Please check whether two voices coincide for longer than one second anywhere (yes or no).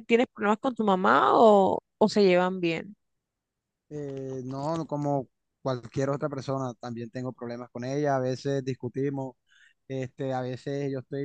no